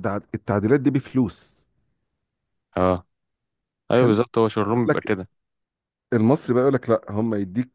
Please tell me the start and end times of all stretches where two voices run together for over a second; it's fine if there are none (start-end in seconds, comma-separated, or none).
none